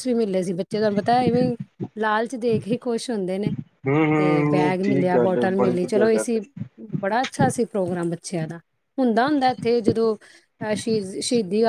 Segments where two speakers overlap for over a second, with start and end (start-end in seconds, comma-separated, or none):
4.2-6.3